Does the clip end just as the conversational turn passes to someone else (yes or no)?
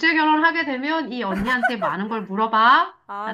yes